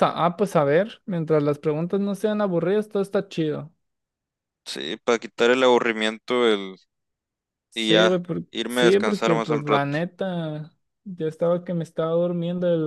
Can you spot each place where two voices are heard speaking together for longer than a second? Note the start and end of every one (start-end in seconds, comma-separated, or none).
7.7-9.9